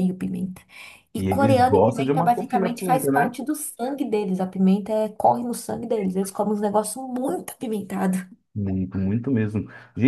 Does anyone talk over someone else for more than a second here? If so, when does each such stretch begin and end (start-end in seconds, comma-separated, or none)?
1.2-3.4